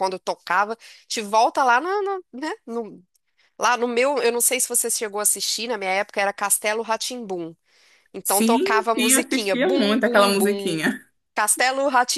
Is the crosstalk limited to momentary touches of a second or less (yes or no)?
no